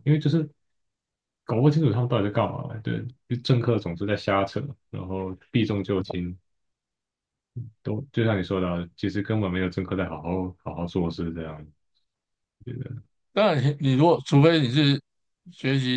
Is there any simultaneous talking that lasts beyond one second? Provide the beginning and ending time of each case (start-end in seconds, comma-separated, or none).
none